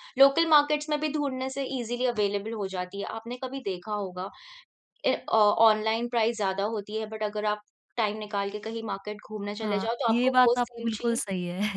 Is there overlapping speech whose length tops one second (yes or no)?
yes